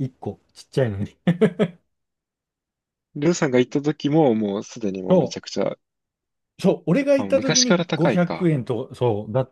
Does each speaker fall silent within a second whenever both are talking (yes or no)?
no